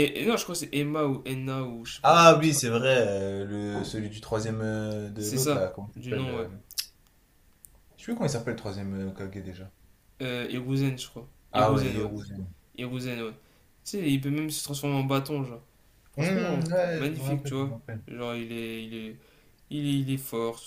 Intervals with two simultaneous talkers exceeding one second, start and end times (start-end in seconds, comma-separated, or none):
5.2-6.5, 16.2-18.0